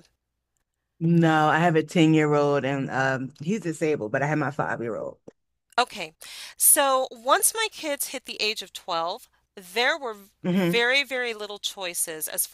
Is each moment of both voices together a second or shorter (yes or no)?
yes